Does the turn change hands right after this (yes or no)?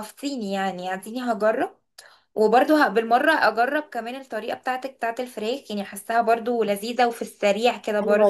yes